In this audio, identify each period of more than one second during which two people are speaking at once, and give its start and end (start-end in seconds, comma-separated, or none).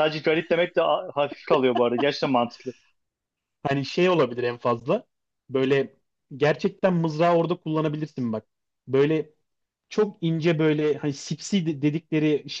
none